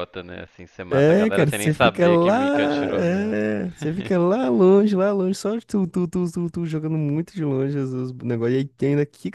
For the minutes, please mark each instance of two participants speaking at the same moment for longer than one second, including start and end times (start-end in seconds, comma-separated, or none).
0.9-2.3